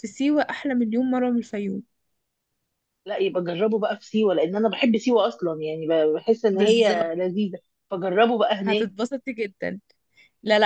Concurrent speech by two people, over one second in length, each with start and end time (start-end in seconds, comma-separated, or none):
none